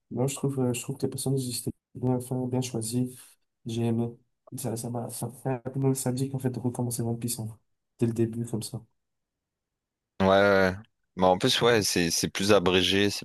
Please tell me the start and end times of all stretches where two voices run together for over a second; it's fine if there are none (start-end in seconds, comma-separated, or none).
none